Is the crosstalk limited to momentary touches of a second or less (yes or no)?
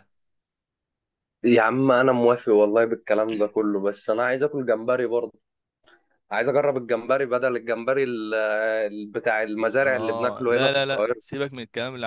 no